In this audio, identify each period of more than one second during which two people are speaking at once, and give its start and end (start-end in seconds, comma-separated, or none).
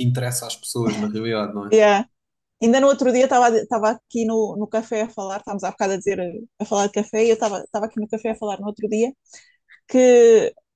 none